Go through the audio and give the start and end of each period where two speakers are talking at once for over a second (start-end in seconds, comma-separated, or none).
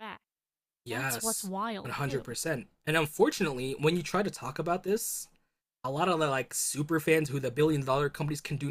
0.9-2.3